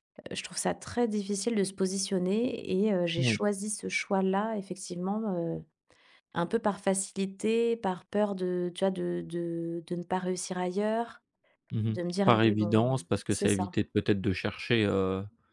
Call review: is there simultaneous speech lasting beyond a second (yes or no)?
yes